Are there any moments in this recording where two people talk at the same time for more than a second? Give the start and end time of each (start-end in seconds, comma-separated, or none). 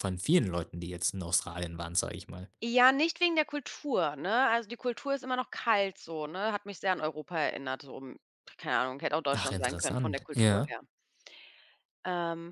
9.3-10.8